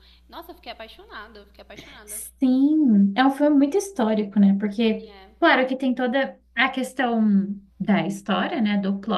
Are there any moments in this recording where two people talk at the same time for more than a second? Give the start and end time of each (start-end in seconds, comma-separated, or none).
none